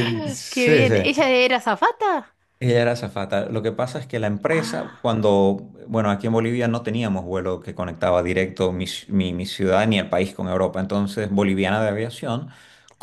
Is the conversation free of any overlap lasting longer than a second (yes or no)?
yes